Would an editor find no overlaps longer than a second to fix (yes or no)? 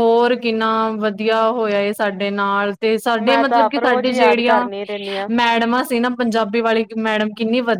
no